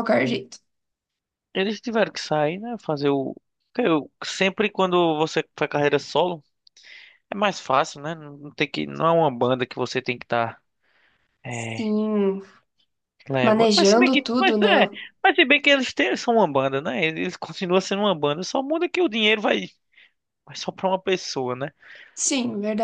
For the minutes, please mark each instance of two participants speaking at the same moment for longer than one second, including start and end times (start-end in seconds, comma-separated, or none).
13.4-15.0